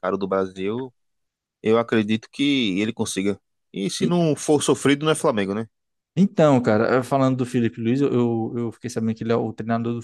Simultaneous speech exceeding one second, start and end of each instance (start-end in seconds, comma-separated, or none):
none